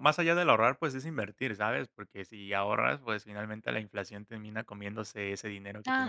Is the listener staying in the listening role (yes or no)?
no